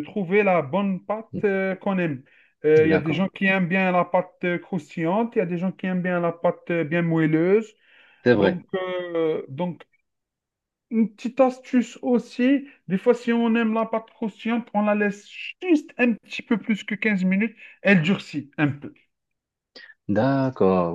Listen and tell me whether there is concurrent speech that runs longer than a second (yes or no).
no